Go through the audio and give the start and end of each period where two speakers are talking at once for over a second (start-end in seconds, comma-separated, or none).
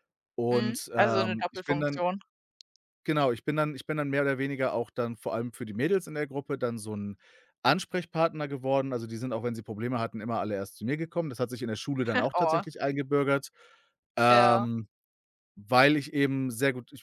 0.5-2.0